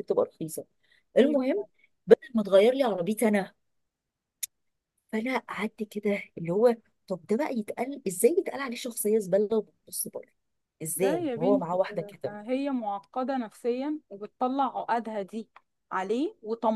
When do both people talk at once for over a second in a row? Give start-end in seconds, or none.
10.9-12.3